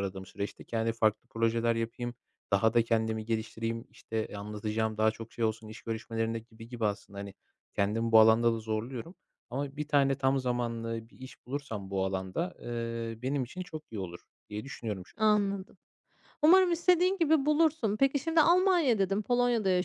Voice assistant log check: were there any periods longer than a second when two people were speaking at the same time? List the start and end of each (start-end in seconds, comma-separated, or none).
none